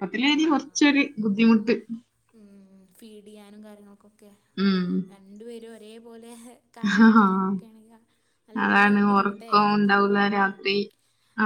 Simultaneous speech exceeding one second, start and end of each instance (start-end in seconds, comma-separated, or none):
8.6-10.5